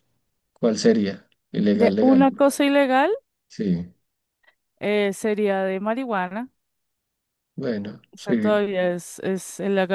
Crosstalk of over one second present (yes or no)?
no